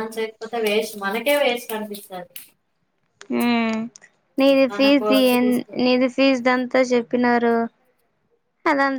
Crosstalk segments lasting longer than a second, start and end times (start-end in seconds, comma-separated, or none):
none